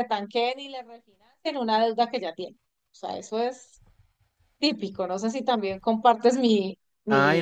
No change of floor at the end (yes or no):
no